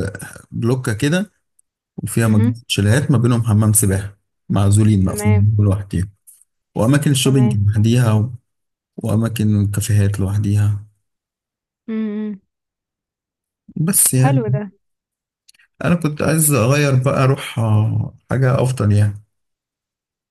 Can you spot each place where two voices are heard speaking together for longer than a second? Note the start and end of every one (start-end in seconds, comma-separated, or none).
none